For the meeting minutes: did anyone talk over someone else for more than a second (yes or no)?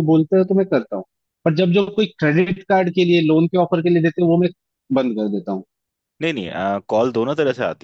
no